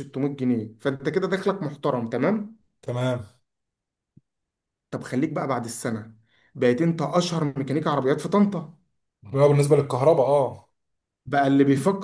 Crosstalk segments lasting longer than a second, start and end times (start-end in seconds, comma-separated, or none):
none